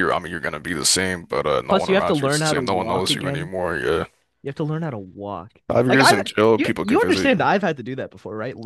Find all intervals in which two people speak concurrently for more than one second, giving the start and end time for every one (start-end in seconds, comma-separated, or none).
1.7-3.5, 5.7-7.5